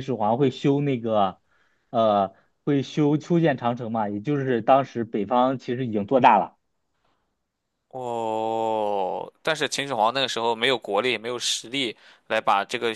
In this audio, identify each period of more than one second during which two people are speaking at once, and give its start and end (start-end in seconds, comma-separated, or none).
none